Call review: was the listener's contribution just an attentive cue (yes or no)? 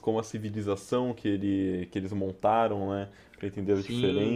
no